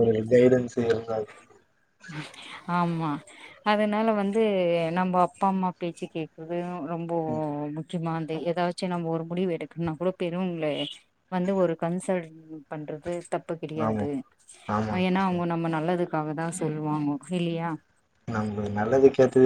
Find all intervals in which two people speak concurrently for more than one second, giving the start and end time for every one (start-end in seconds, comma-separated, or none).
none